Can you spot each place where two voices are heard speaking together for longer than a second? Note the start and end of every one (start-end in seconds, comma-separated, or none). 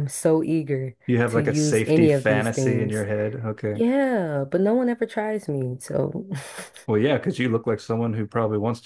1.1-3.0